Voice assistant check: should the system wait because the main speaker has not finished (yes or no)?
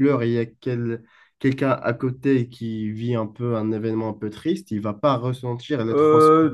no